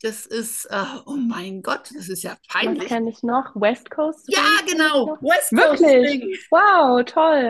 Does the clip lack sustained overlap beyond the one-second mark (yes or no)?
no